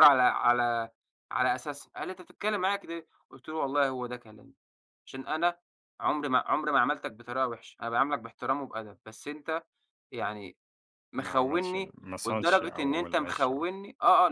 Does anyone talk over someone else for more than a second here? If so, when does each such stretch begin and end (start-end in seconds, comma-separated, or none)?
11.2-13.7